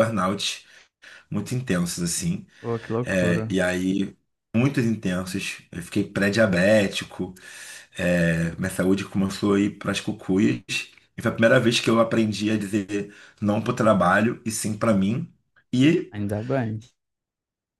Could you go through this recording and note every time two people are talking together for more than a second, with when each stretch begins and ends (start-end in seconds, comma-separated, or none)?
none